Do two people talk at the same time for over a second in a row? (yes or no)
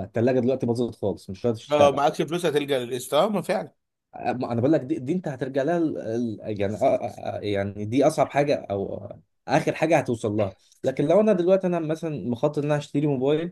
no